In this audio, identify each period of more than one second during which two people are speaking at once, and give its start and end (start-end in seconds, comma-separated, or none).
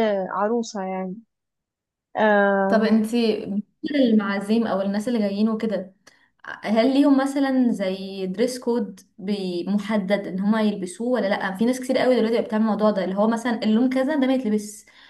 none